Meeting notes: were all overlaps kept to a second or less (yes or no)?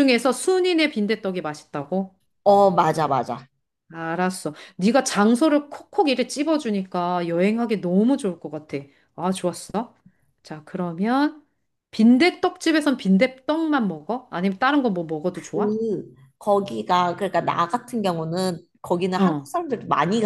yes